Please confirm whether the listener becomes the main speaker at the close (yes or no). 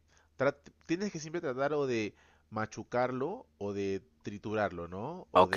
no